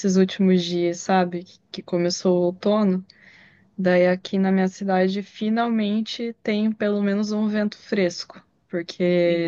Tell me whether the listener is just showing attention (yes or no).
yes